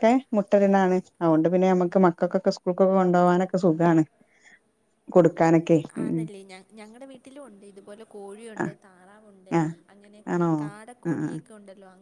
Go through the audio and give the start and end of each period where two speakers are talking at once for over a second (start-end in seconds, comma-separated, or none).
none